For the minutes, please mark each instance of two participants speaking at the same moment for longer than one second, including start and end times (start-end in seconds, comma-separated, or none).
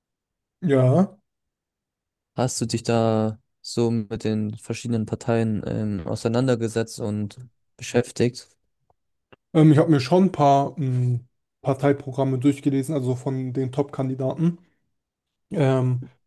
none